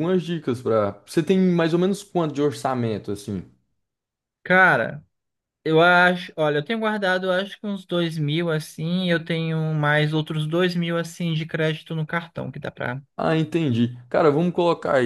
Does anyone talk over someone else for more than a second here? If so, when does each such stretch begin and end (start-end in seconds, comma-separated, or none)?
none